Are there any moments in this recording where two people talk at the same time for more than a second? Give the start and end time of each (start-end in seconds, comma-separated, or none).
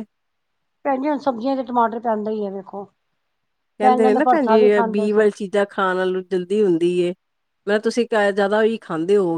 3.8-5.3